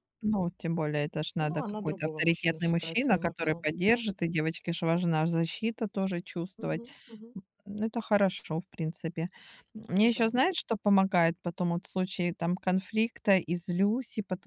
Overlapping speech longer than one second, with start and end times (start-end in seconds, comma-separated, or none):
1.4-4.0